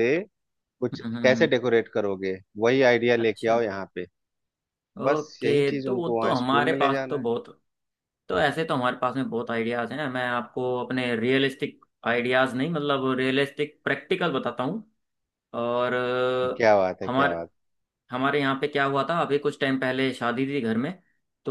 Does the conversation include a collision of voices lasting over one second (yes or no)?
yes